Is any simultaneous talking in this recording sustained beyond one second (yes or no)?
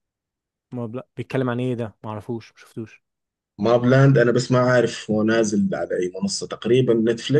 no